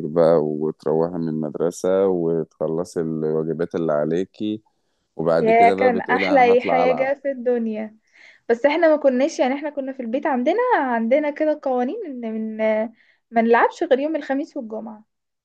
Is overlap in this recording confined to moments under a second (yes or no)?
no